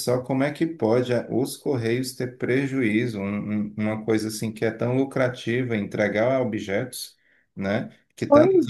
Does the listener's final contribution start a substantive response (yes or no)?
no